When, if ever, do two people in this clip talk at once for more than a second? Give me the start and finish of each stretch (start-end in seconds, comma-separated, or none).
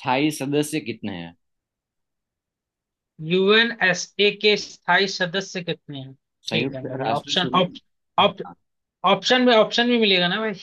6.5-8.5